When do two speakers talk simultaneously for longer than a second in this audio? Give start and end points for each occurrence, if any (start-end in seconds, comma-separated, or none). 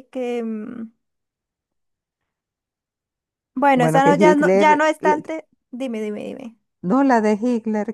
3.8-5.2